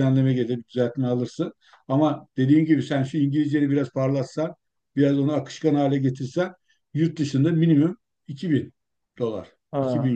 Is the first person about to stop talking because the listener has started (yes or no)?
yes